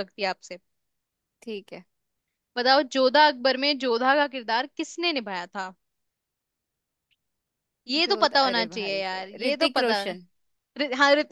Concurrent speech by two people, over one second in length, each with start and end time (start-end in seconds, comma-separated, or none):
8.1-10.1